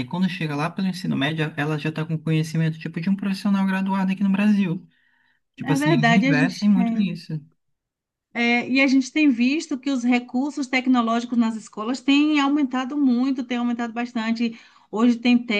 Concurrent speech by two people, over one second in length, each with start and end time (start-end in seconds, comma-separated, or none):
5.6-7.2